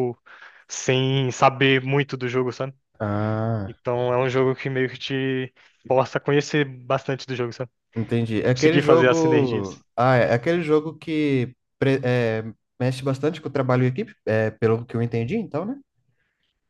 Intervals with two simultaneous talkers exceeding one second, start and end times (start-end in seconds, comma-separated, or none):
8.6-9.8